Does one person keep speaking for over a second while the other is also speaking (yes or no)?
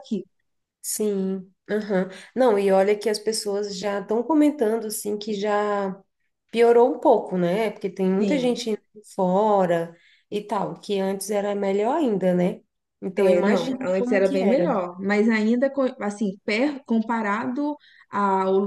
yes